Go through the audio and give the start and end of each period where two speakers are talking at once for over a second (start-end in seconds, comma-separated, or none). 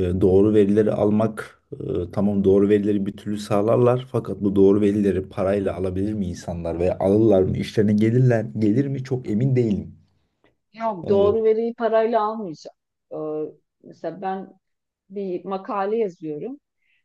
none